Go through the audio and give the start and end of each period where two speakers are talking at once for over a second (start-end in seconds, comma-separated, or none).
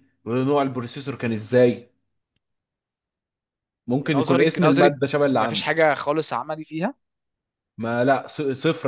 4.0-6.0